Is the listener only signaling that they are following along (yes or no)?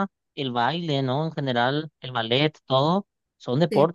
yes